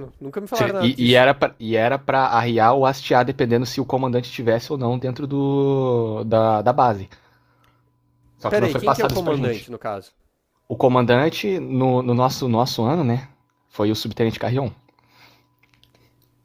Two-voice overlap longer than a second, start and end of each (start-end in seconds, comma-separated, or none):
8.5-9.7